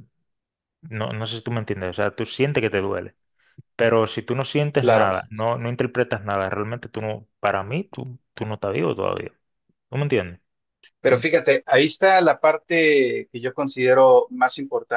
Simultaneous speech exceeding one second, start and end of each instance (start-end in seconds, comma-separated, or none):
none